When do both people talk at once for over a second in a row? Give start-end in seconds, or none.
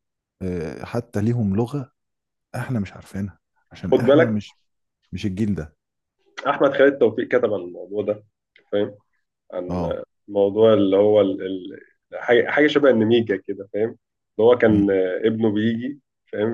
none